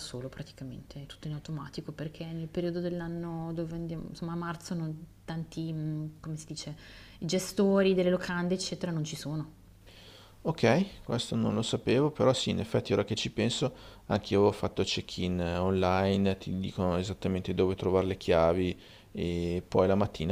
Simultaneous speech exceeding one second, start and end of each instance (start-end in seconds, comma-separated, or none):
none